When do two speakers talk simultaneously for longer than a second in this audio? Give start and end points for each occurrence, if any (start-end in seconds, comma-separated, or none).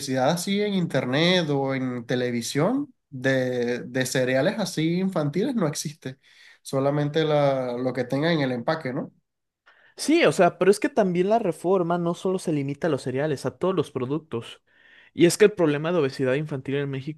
none